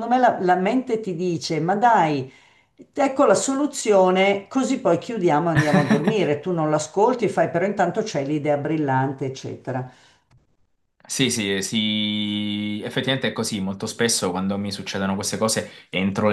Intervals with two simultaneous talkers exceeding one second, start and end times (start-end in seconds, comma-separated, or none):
none